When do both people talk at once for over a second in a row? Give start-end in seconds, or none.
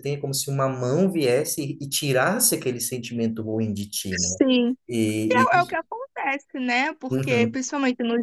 none